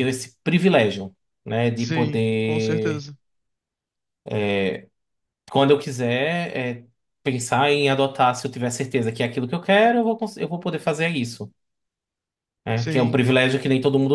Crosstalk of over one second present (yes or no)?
yes